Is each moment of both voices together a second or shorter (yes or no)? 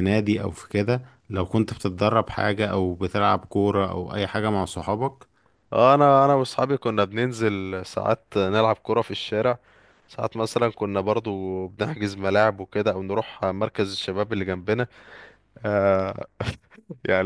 yes